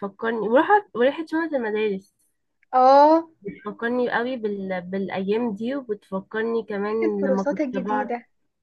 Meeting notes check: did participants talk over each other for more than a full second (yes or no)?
yes